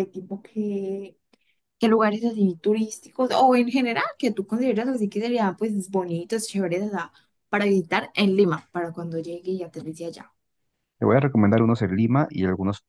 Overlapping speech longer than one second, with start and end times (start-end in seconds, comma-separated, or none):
none